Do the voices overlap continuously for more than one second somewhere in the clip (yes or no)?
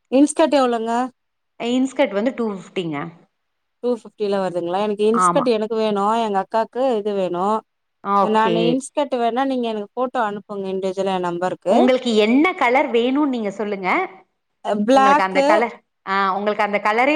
no